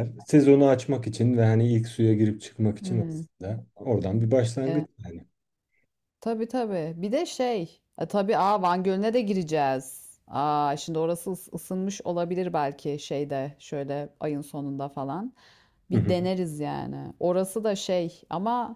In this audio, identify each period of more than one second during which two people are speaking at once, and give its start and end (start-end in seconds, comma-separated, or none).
none